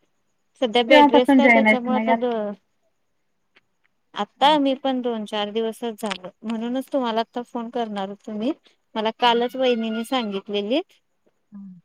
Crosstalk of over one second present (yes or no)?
yes